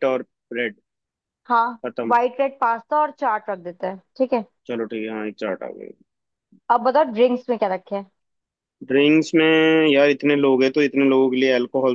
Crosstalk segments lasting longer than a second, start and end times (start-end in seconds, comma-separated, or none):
none